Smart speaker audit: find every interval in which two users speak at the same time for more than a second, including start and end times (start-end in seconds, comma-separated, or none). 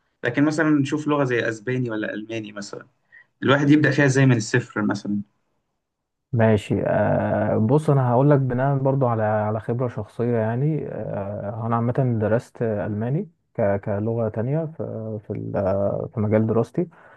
none